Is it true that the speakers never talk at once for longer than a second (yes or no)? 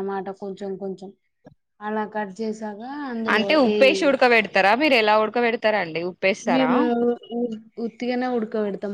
yes